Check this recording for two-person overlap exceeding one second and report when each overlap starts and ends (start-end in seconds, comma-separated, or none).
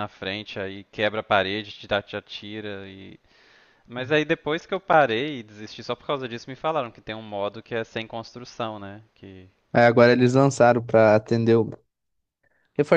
none